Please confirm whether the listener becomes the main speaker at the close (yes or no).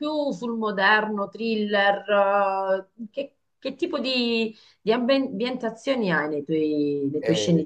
yes